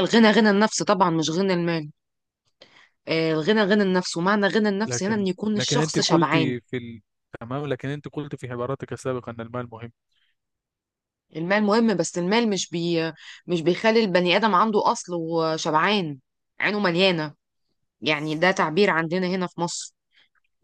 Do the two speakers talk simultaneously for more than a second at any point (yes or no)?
yes